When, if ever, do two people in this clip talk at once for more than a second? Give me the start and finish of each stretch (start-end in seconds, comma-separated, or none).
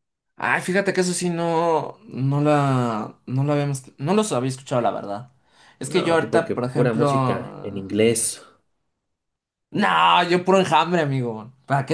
5.8-7.9